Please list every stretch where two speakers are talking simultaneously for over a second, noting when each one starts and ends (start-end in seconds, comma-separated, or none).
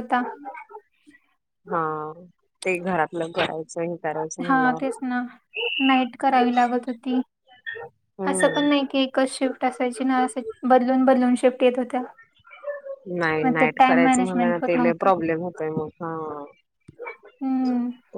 13.4-15.1